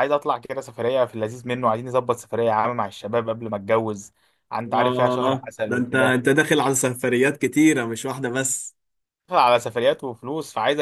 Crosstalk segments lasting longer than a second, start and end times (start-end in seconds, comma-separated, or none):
4.8-6.2